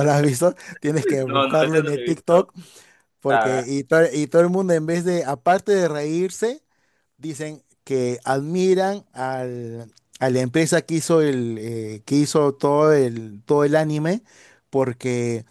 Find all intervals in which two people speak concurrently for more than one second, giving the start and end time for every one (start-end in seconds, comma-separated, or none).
1.3-2.5